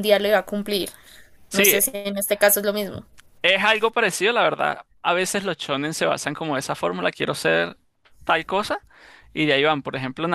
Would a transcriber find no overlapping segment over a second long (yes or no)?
yes